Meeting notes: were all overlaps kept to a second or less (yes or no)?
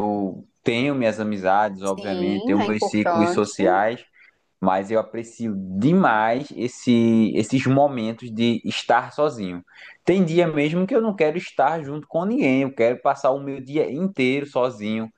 no